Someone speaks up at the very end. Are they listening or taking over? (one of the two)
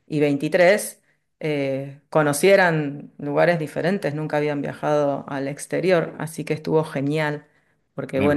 listening